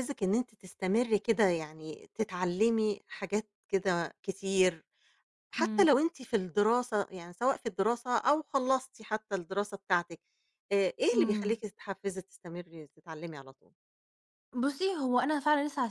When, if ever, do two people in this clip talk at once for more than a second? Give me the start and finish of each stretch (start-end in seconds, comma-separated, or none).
none